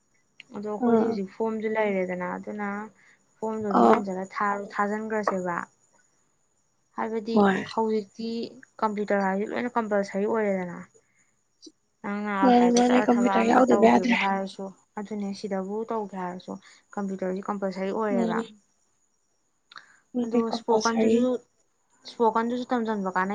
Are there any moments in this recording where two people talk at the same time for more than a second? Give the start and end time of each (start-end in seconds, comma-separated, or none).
12.4-14.2